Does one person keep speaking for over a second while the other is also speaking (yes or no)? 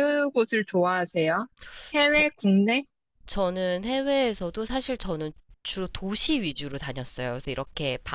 no